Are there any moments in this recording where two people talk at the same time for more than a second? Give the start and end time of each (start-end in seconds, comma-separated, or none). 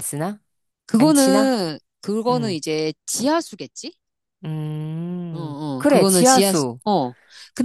5.3-6.8